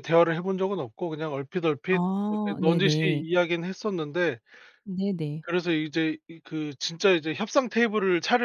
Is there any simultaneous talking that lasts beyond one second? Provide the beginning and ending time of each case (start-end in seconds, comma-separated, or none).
1.9-3.2